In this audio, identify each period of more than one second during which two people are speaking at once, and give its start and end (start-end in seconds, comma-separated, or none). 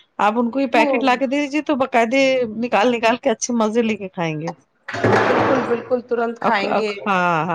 none